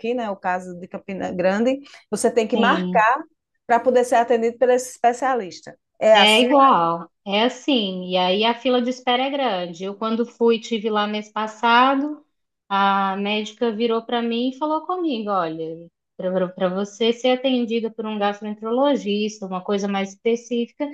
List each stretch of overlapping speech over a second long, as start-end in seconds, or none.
none